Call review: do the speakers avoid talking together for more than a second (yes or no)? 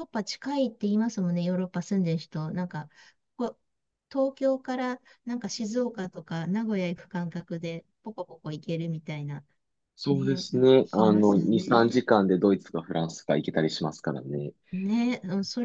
no